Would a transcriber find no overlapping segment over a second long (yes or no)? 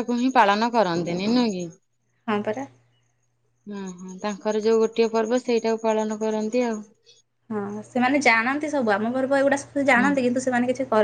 yes